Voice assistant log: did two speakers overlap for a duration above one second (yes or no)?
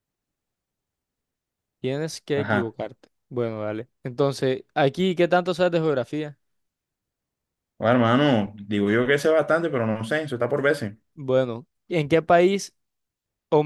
no